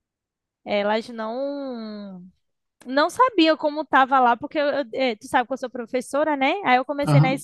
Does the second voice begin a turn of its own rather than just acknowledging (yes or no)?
no